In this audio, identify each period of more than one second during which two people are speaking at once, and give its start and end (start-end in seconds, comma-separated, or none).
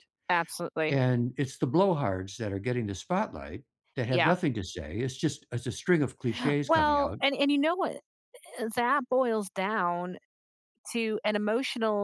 none